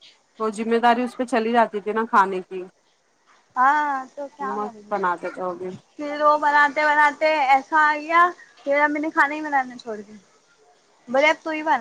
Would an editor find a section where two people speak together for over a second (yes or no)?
no